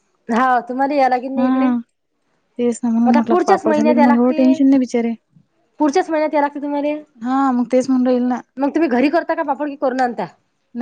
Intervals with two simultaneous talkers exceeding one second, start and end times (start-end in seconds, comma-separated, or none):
3.3-4.6